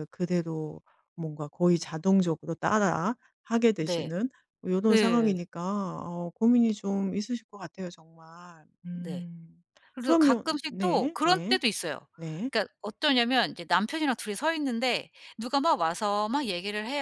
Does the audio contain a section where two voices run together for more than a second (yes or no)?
yes